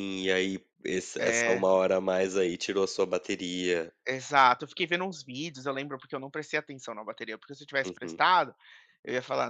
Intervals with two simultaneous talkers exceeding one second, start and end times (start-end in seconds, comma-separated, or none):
none